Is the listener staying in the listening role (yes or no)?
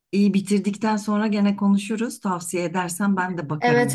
no